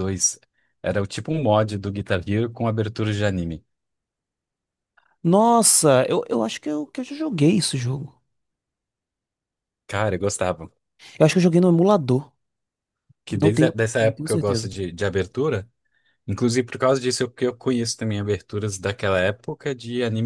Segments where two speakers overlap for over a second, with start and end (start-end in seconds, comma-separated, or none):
13.3-14.7